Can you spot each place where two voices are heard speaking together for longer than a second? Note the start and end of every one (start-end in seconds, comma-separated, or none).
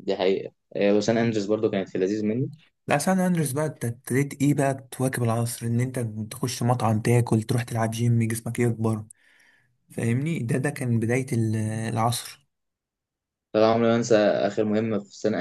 none